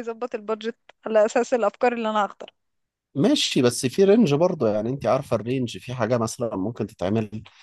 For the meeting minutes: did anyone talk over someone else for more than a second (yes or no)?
no